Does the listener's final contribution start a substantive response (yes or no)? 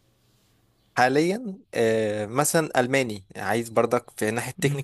no